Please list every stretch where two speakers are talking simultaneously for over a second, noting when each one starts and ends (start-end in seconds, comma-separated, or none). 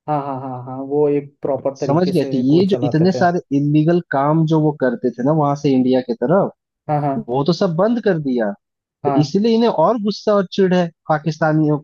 1.8-3.2